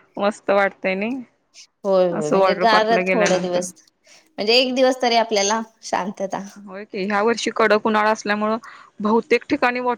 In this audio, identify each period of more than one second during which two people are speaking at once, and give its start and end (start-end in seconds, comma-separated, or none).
2.2-3.6